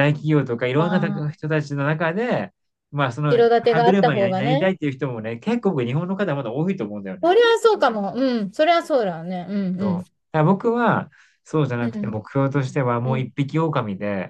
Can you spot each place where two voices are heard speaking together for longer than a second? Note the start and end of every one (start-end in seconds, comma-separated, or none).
3.3-4.7